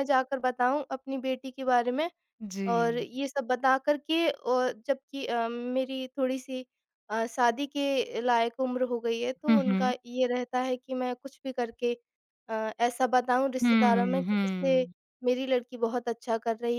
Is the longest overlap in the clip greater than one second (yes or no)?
yes